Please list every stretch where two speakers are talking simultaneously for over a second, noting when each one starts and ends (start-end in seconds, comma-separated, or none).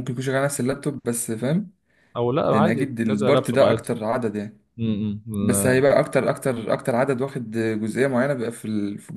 2.5-3.9